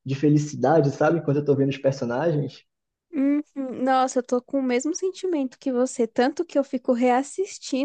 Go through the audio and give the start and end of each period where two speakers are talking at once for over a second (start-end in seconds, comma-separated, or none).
none